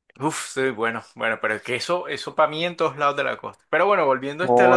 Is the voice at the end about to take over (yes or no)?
yes